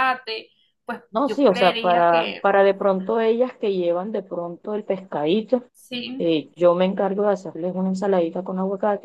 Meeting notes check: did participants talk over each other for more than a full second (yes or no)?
yes